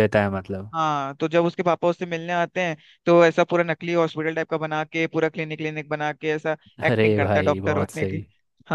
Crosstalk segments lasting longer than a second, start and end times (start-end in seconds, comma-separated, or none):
6.9-8.2